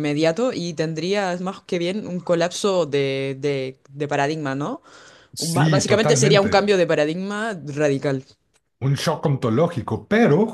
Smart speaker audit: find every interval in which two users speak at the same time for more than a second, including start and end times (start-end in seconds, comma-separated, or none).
5.4-6.7